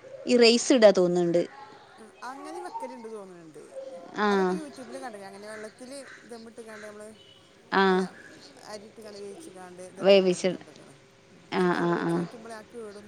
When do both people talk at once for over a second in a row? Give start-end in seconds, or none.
none